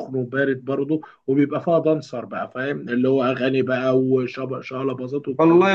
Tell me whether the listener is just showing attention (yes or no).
no